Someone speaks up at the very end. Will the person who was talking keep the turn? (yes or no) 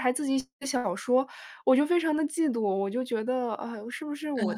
yes